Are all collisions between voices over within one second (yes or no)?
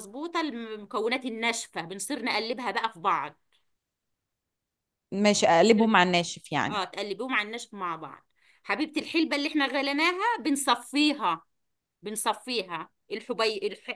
yes